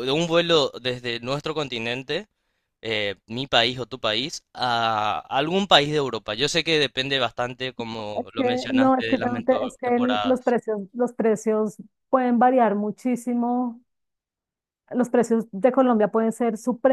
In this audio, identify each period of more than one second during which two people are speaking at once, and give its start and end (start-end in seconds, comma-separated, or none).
8.2-10.6